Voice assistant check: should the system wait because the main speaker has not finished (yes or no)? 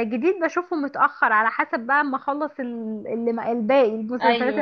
yes